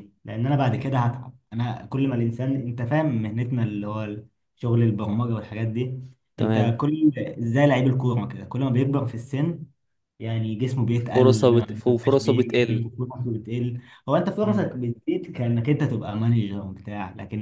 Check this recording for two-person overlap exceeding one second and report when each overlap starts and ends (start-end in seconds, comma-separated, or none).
11.1-12.9